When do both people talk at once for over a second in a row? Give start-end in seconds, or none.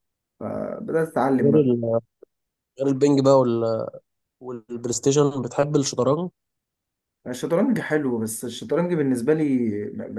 none